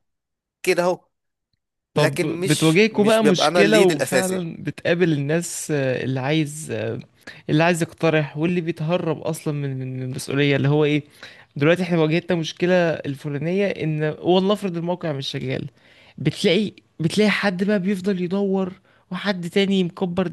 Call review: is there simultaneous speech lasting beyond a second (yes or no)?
yes